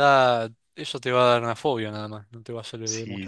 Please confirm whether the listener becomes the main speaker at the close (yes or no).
yes